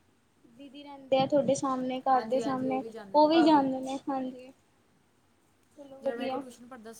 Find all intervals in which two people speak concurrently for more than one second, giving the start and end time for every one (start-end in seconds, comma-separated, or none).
2.1-3.6